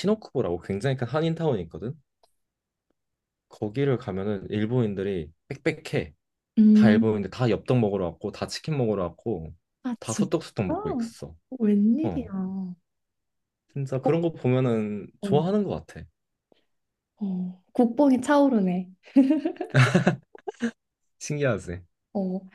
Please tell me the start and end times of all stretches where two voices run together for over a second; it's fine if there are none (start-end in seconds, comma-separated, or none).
none